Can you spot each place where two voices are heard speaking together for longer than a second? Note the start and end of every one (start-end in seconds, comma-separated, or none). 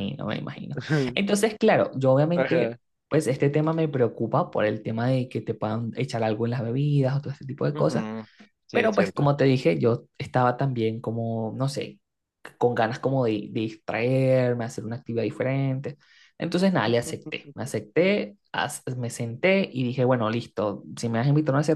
none